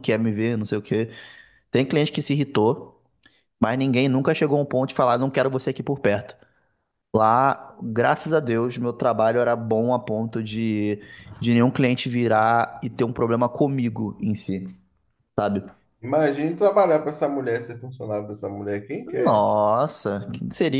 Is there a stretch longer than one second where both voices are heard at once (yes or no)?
no